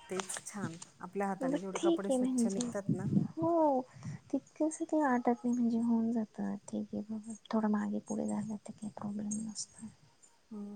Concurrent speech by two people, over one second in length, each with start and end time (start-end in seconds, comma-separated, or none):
1.5-2.7